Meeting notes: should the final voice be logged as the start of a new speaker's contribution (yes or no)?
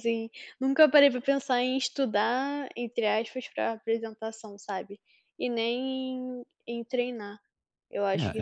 yes